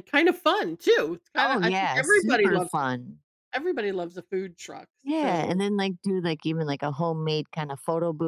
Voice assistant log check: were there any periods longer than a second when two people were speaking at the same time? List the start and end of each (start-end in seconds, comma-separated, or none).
1.4-2.7